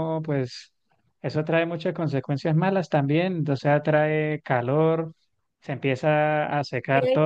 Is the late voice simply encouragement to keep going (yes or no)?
yes